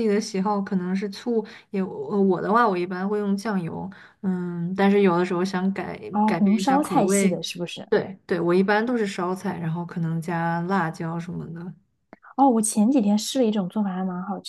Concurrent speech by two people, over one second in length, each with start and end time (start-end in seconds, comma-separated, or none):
6.1-7.4